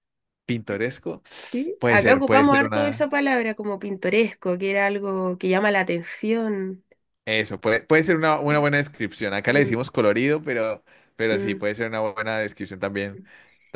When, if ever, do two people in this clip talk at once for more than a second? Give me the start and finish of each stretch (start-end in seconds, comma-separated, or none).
1.8-3.1